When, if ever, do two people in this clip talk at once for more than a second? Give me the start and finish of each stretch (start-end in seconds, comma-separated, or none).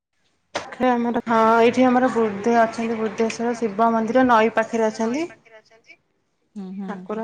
2.6-5.2